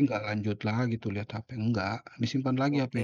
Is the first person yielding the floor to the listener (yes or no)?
yes